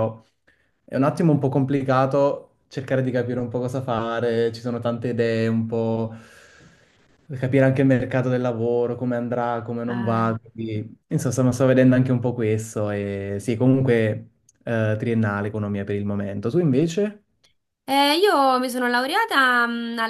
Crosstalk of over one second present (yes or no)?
no